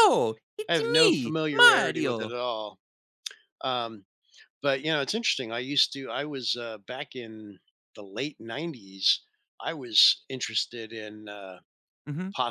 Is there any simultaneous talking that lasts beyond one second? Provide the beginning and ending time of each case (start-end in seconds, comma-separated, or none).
0.7-2.4